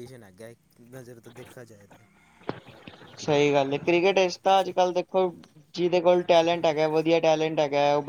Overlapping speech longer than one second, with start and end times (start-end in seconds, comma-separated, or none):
none